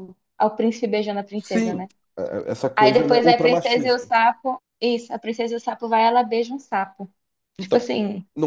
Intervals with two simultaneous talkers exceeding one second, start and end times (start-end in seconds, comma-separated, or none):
2.8-4.0